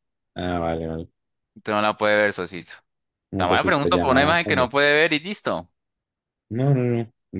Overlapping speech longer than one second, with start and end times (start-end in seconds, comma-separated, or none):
3.4-4.7